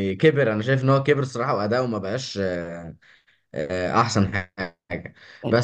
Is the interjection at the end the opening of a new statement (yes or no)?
no